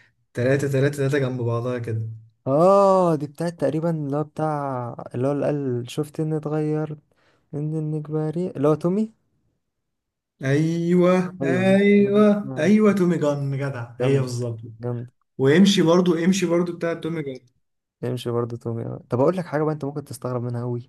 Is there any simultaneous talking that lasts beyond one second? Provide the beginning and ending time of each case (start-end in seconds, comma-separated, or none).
11.4-13.0